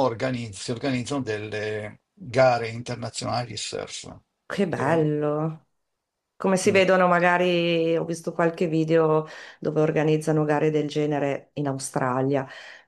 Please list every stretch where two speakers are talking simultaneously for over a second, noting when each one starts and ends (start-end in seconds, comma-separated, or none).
none